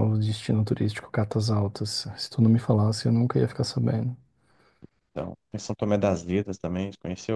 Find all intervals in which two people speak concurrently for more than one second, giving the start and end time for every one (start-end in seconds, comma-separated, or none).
none